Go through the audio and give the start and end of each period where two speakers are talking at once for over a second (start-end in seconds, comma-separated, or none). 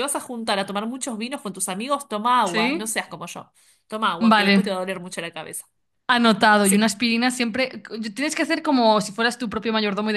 none